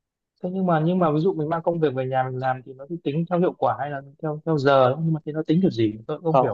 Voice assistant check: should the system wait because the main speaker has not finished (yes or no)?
no